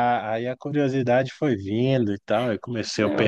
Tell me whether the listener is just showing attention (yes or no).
no